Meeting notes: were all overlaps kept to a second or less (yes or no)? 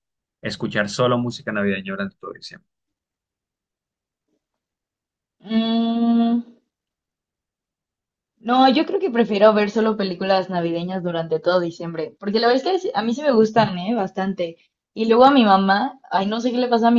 yes